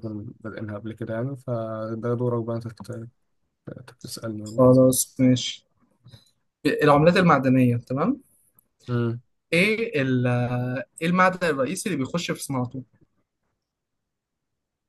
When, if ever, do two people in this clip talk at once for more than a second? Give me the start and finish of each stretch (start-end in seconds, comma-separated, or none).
none